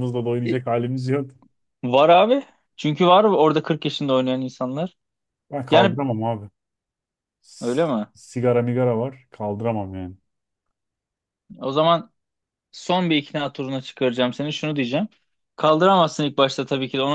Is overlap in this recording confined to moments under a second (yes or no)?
yes